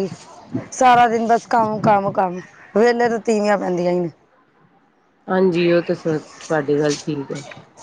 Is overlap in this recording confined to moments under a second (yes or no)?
yes